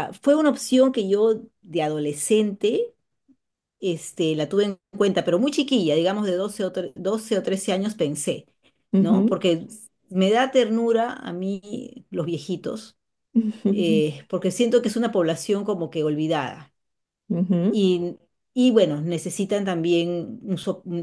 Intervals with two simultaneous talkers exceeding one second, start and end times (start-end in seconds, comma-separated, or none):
none